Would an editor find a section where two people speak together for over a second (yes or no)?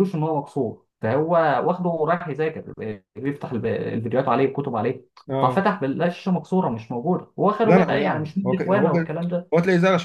yes